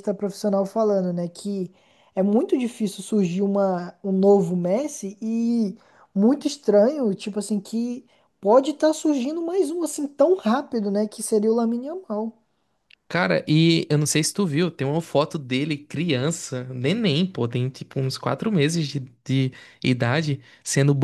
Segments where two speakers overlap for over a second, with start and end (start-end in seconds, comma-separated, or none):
none